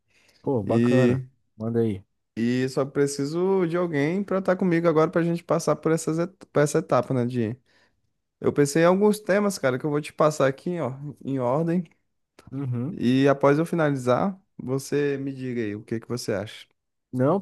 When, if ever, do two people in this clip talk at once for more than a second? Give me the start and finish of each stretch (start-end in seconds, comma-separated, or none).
none